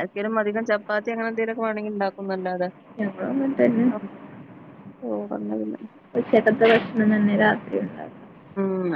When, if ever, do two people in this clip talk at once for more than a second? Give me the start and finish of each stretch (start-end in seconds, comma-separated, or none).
none